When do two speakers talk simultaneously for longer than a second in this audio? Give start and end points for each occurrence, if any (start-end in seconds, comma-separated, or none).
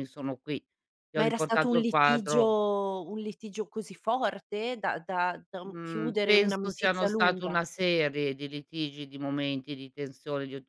1.2-2.6, 5.7-7.6